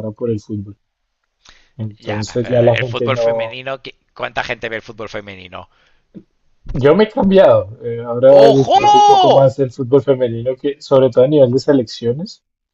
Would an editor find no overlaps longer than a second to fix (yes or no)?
no